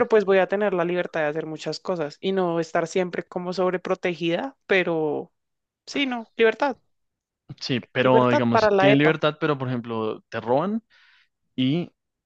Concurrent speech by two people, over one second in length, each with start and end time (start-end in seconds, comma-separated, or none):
8.0-9.2